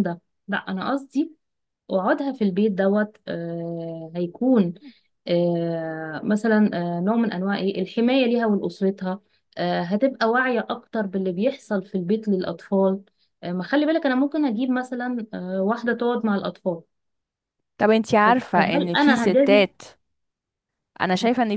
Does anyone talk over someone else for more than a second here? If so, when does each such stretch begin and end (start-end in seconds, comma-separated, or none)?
18.2-19.6